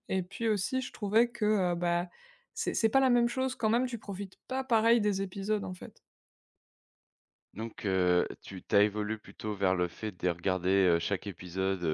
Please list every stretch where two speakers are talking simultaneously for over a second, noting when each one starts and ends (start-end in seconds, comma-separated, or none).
none